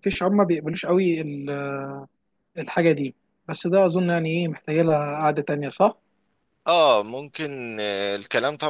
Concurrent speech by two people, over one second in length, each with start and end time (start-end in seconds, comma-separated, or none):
none